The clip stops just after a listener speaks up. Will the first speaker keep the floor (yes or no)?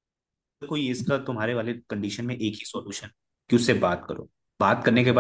yes